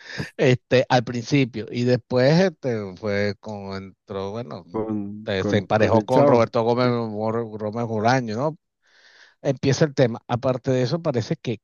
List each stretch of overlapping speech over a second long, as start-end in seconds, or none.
5.2-6.9